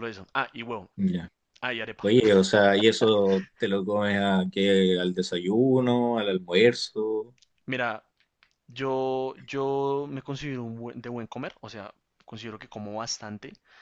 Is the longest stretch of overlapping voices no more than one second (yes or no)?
yes